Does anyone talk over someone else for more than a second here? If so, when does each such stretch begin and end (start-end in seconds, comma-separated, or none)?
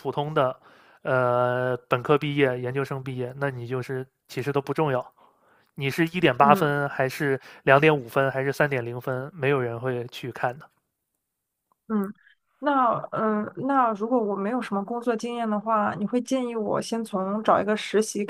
none